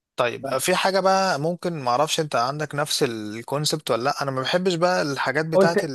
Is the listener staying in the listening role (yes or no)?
no